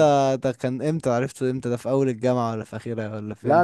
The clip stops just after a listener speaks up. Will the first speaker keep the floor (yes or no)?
no